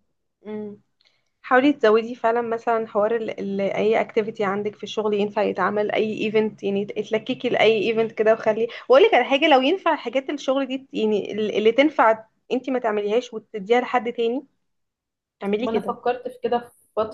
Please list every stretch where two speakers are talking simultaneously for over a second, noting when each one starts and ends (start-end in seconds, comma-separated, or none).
none